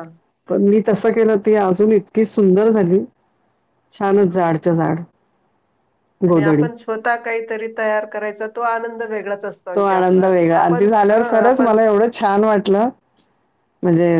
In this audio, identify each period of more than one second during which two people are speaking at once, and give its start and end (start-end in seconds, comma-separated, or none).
9.8-11.8